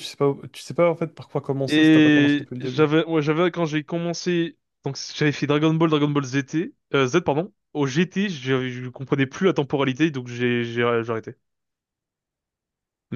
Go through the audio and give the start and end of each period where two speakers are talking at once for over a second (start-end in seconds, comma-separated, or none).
1.7-2.9